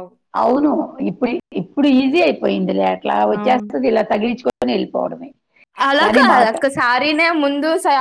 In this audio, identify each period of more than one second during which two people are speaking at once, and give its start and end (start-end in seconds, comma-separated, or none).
none